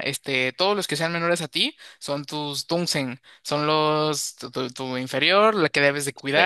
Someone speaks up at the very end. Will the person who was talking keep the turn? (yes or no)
yes